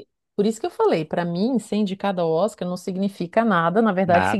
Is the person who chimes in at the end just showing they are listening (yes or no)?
yes